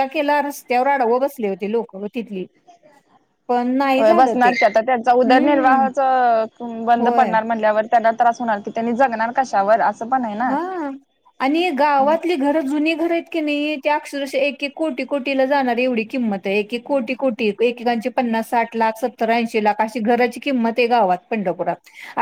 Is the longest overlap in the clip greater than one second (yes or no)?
no